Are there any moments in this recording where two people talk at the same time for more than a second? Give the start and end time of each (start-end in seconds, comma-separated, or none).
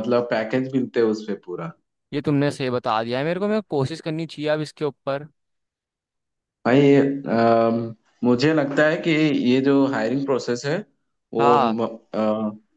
none